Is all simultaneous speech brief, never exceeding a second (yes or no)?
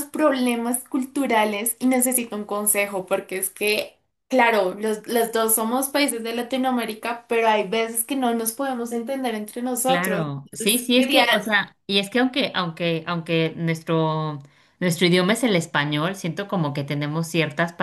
no